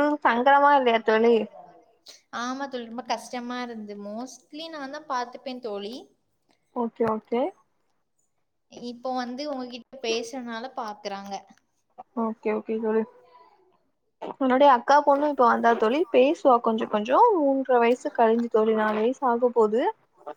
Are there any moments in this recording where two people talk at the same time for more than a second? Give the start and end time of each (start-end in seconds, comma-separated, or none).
none